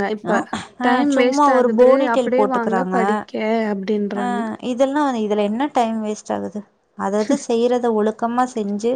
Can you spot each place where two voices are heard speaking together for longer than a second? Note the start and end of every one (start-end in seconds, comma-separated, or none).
0.9-3.0